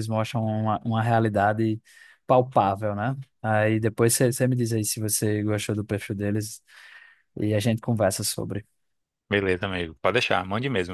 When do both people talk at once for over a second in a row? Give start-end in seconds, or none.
none